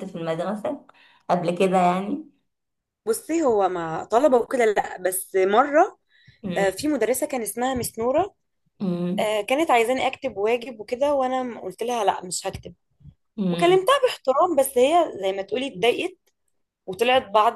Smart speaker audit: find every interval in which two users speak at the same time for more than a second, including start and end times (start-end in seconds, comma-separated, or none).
none